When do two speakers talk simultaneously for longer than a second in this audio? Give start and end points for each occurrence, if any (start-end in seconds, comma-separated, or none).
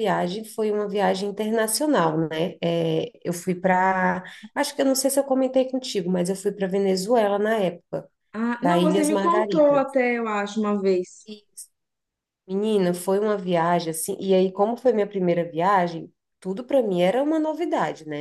8.6-9.8